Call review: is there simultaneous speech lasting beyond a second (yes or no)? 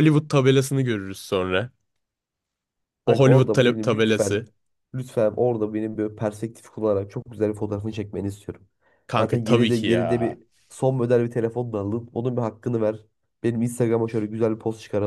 yes